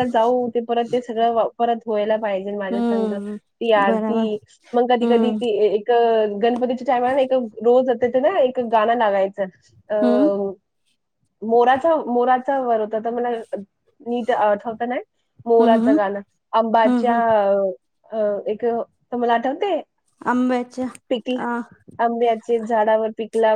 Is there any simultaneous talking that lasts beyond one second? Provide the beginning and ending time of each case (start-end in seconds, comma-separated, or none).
none